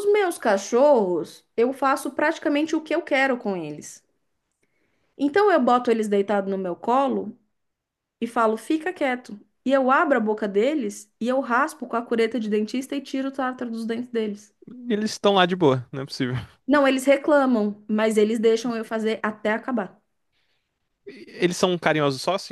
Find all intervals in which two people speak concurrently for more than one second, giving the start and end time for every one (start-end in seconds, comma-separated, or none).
none